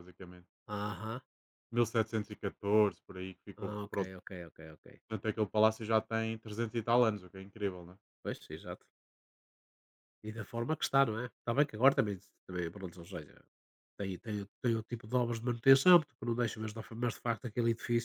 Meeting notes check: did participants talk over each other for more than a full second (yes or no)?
no